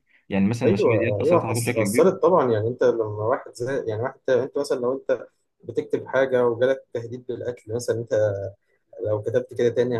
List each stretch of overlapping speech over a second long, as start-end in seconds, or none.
0.7-2.1